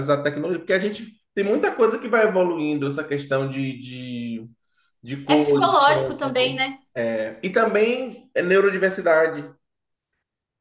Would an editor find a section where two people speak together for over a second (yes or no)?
yes